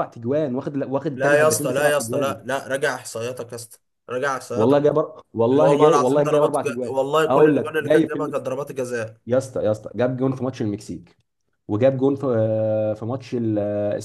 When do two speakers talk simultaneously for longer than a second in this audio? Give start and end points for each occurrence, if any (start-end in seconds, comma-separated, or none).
1.1-2.4, 5.5-8.5